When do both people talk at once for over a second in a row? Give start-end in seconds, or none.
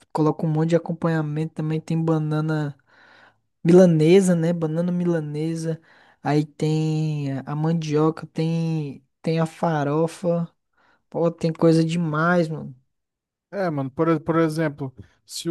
none